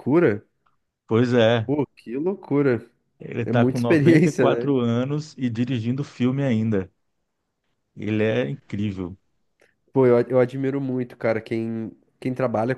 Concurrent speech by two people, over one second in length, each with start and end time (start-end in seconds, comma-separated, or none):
3.4-4.7